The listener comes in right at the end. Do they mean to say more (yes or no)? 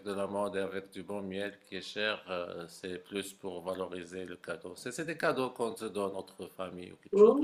yes